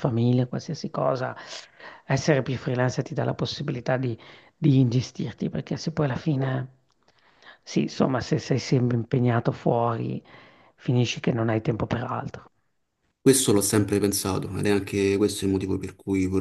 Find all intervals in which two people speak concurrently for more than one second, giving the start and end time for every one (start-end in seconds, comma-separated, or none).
none